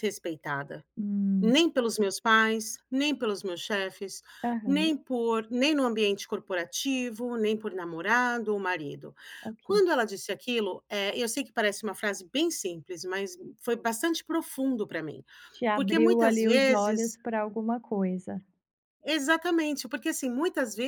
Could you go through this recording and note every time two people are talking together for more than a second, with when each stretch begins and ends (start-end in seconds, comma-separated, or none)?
15.7-17.2